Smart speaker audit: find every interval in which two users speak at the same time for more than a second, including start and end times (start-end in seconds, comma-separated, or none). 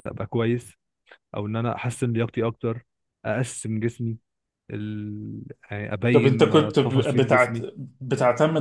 6.1-7.6